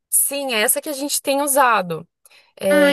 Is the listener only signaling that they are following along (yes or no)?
no